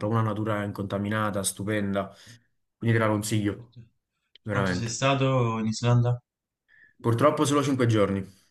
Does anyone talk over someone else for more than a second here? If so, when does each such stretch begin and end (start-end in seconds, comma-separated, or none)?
none